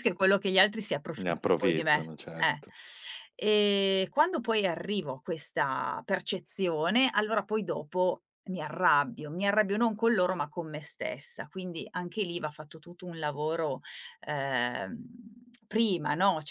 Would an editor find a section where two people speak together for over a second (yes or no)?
yes